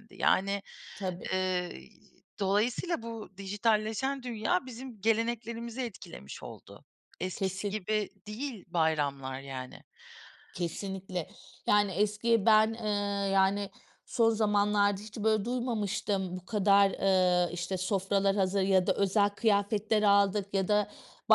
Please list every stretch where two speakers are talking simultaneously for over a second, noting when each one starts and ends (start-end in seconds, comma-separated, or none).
none